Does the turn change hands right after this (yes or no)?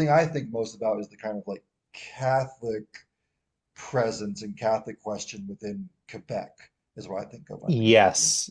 yes